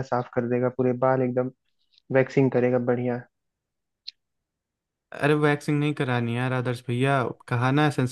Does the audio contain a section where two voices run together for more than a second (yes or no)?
no